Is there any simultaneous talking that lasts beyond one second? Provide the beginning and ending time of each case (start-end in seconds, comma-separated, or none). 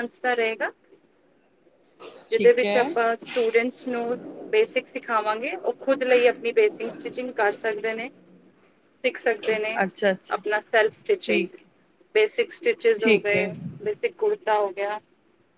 none